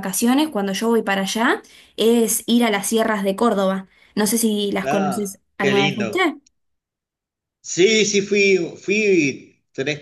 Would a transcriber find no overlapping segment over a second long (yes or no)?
no